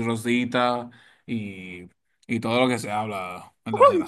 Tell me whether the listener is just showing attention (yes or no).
no